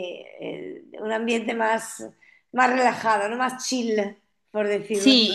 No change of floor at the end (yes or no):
no